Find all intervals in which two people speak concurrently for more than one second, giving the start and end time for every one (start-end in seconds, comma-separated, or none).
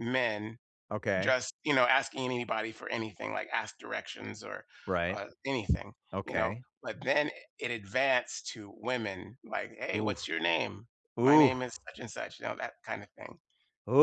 none